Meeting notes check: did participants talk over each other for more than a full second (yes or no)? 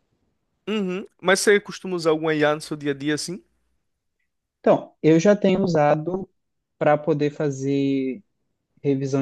no